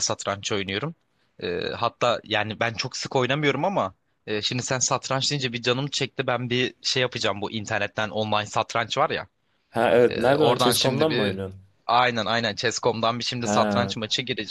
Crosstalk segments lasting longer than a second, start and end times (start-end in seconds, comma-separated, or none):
10.1-11.3